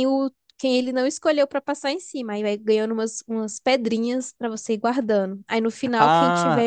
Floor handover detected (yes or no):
yes